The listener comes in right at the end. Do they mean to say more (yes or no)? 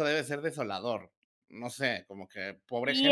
yes